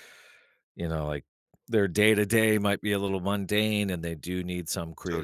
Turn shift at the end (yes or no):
no